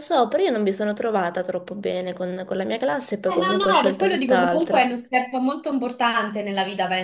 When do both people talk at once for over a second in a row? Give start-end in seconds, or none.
3.3-4.9